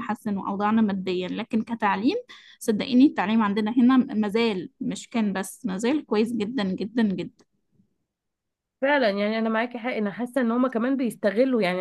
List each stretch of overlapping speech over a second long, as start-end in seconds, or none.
none